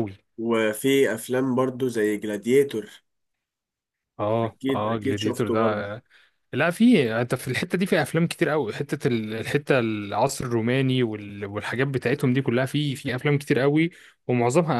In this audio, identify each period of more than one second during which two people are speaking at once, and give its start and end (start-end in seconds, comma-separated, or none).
4.4-5.9